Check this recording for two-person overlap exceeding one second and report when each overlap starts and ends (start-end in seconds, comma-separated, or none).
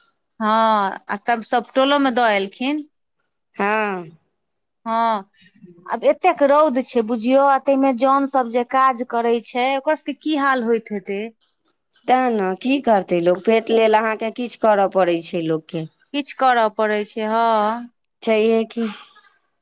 none